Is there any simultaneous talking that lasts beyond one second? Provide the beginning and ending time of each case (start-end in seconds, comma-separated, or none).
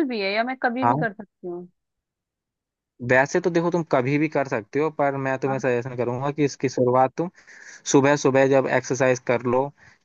none